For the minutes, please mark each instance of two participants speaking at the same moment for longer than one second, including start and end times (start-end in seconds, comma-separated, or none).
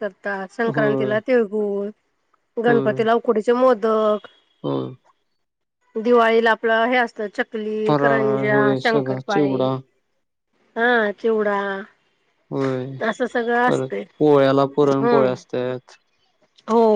7.9-9.6